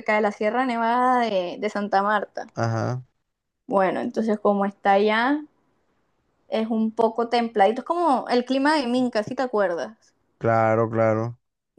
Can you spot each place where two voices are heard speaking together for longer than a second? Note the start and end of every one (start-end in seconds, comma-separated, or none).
none